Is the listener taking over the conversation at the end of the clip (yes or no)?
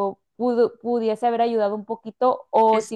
no